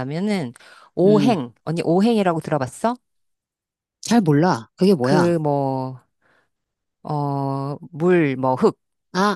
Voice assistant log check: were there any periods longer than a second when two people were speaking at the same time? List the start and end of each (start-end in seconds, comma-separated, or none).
none